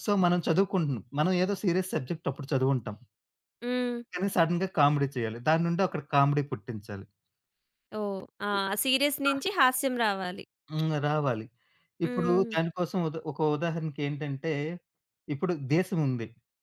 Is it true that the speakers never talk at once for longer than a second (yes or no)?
yes